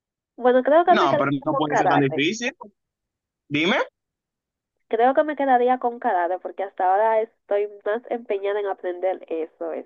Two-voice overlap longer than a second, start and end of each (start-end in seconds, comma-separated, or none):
0.8-2.3